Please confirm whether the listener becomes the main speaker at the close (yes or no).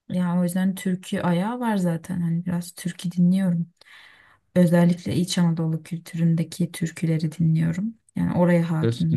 yes